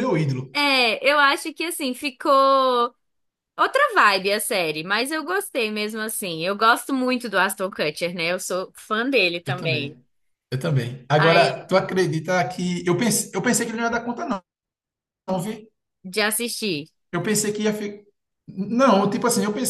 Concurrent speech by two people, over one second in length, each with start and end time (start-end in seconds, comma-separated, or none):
none